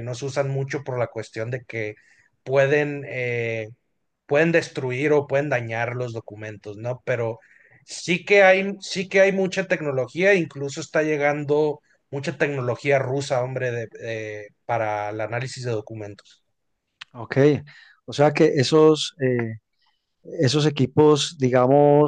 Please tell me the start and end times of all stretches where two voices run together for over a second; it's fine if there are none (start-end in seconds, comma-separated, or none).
none